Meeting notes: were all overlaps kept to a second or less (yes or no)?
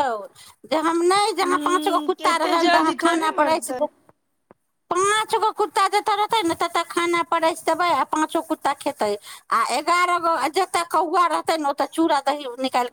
no